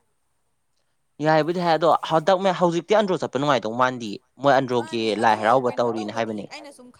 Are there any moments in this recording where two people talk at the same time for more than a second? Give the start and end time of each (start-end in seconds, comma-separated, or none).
4.8-6.4